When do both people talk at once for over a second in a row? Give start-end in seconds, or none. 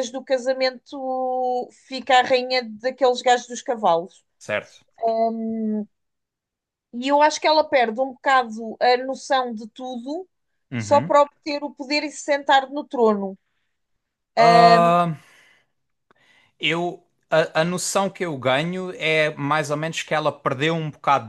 none